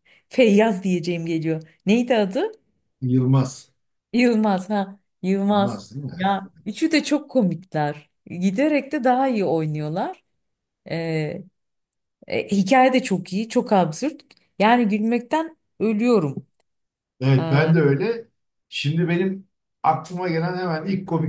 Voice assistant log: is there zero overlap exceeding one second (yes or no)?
yes